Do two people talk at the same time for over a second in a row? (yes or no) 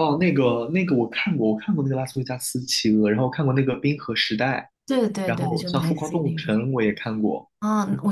yes